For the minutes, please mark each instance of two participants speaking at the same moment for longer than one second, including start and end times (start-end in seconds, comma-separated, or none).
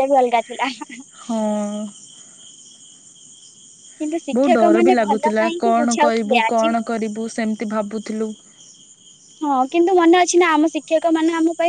4.4-6.7